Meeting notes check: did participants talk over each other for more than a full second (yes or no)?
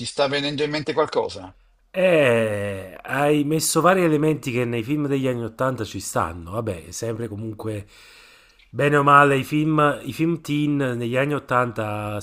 no